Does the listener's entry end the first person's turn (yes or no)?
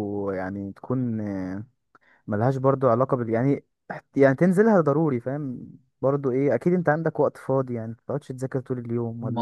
yes